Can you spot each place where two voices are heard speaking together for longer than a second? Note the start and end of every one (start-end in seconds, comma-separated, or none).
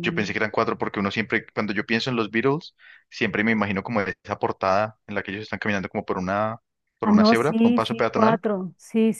7.0-8.4